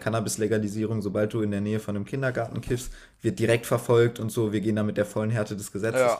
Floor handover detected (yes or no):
no